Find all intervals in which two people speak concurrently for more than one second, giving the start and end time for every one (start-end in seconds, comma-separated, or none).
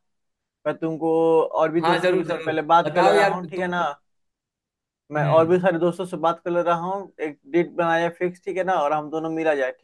1.8-3.7